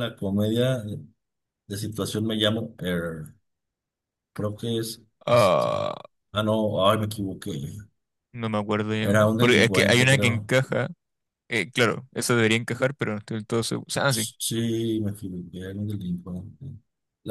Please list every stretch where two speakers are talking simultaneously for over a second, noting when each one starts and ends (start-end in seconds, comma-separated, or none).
9.0-10.5